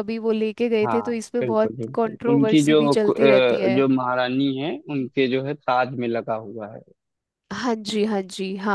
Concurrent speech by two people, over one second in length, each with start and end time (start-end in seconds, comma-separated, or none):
0.8-3.8